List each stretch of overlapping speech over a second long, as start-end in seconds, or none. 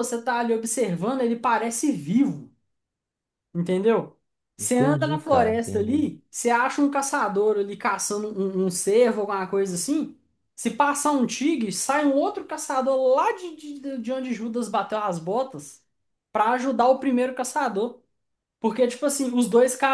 4.6-6.1